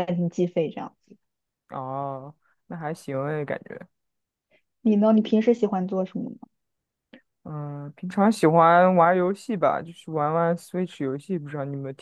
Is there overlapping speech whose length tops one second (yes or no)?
no